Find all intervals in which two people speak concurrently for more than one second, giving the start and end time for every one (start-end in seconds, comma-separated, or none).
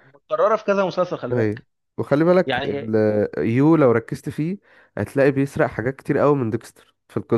none